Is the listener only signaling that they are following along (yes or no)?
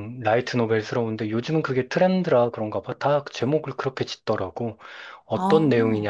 yes